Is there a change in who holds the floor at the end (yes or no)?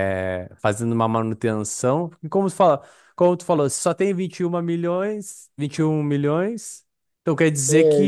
no